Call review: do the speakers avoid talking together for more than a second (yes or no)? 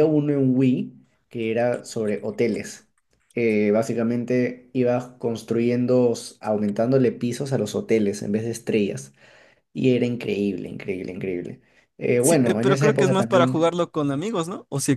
no